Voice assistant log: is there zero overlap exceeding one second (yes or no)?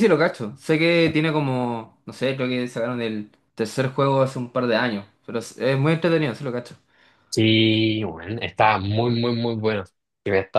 yes